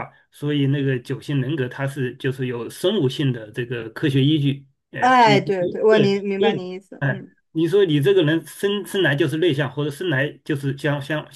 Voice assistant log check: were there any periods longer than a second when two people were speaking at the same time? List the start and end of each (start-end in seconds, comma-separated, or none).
5.0-7.3